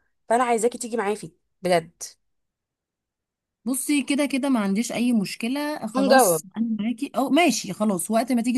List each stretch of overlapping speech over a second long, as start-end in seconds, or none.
none